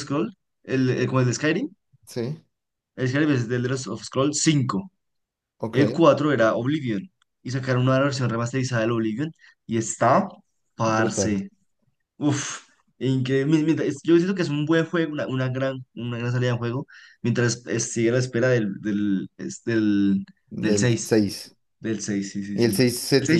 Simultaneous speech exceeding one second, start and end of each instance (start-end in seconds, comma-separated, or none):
none